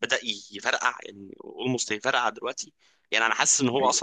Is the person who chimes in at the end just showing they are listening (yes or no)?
yes